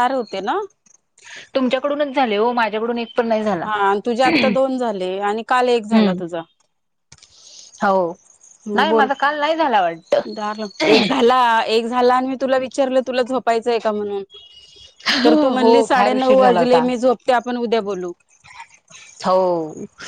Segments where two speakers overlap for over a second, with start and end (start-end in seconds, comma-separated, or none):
15.6-16.8